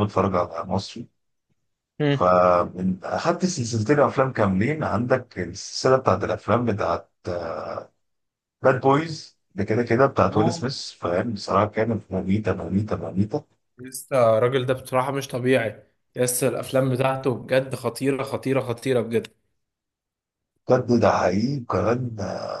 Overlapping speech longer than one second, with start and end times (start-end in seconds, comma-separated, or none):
none